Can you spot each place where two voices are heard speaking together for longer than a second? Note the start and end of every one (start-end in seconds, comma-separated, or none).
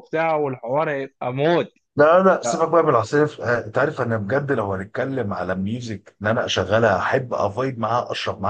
none